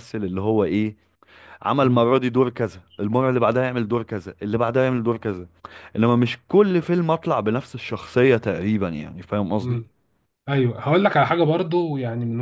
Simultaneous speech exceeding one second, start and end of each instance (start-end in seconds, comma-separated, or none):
none